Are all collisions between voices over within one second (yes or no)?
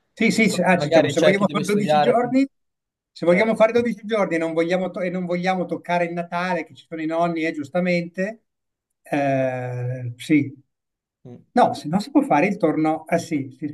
no